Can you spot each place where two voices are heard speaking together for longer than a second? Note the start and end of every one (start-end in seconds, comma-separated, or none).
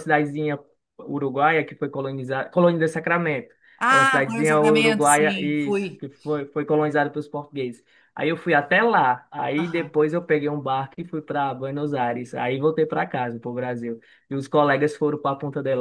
3.9-6.0